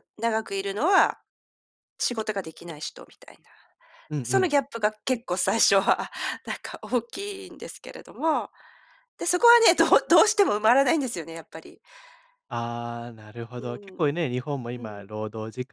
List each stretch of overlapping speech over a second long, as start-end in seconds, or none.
none